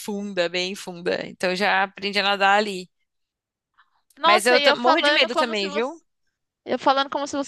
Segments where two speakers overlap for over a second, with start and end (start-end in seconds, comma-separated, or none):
4.2-6.0